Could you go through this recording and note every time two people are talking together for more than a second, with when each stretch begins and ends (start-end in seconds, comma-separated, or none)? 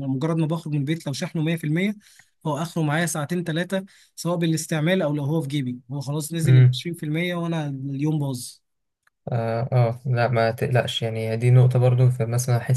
none